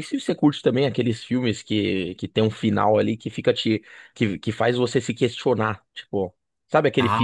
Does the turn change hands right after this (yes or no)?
no